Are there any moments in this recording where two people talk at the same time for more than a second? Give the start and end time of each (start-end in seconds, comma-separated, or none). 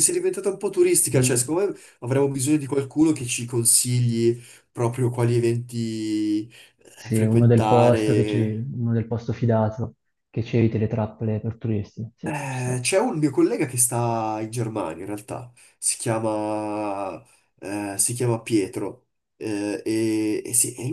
7.0-8.6